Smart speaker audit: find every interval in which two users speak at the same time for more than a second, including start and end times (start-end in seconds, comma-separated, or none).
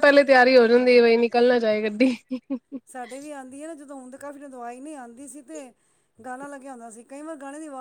none